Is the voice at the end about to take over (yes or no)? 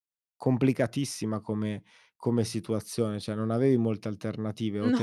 no